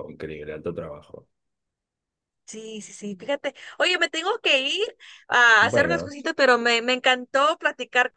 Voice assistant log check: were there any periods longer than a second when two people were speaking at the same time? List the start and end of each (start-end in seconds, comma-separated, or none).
none